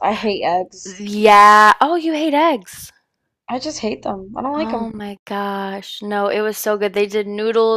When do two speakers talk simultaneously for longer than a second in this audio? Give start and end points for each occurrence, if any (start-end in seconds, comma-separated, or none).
none